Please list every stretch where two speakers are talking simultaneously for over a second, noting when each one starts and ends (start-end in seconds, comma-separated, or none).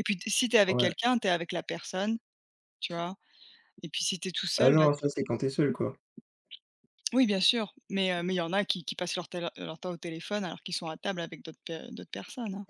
none